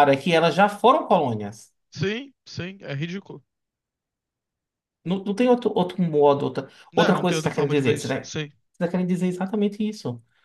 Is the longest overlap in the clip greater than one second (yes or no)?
yes